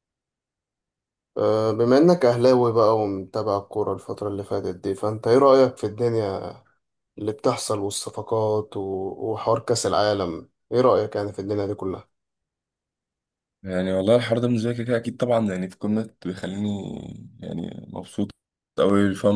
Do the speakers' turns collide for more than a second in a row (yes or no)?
no